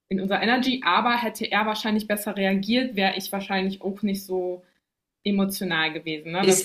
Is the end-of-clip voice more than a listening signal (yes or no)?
yes